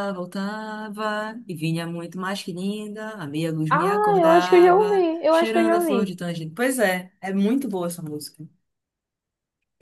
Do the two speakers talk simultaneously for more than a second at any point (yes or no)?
yes